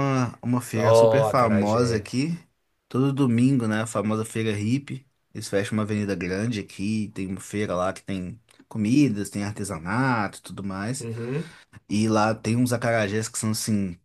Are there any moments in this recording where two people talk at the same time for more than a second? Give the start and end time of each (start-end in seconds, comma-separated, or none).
0.8-2.1